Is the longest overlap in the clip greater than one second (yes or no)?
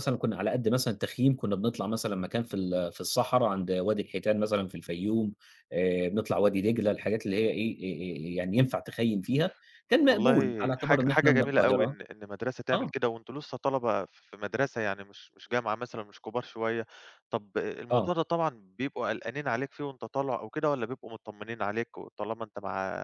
yes